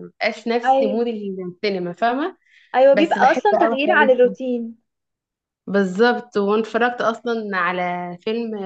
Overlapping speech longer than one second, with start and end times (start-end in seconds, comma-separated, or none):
2.9-4.4